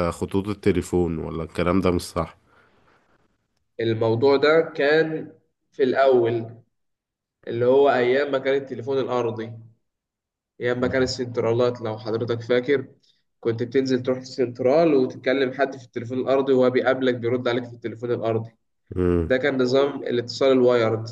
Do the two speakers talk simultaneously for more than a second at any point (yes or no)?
no